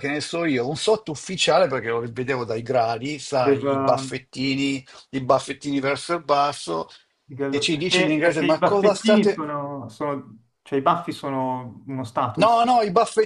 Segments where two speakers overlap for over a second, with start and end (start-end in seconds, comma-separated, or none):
7.5-9.4